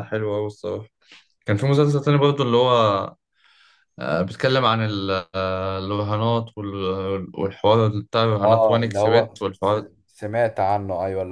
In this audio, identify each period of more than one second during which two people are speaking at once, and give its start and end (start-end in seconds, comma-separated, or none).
8.4-9.9